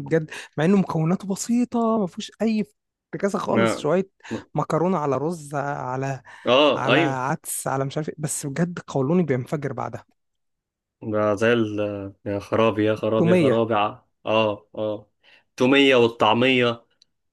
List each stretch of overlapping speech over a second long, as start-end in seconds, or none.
none